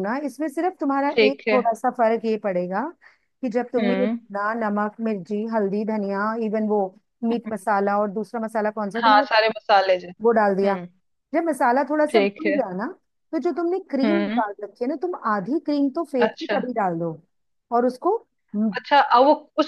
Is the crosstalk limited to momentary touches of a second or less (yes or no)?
yes